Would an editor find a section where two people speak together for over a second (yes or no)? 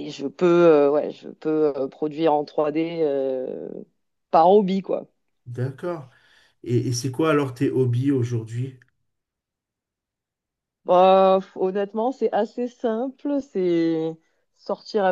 no